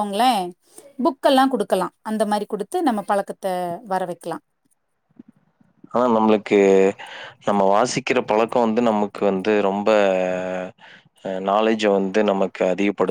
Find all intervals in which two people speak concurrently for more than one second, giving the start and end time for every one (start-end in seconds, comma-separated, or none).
none